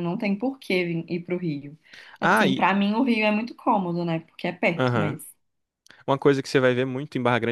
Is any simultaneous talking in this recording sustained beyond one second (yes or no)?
no